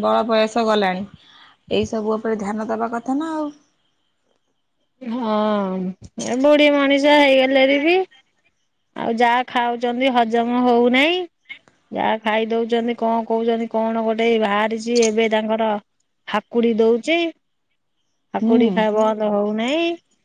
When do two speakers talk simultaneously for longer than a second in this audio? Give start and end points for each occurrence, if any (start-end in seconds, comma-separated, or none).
none